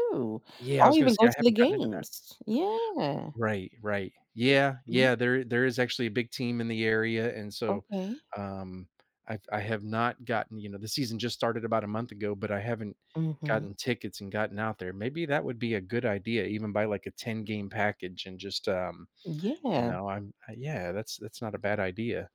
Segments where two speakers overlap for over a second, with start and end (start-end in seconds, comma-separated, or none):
0.8-2.0